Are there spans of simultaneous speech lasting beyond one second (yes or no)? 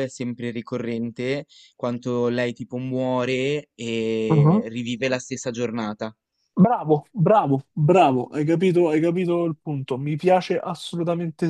no